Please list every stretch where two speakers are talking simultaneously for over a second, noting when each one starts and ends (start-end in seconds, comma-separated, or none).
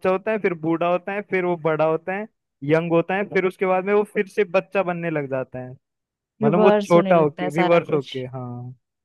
6.4-8.1